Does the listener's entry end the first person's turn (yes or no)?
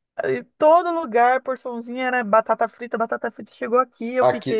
yes